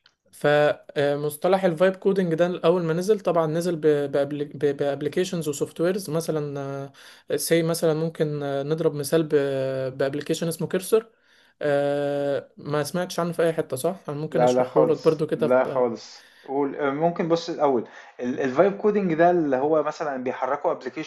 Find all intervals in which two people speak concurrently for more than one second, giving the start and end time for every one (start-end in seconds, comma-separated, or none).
14.3-15.8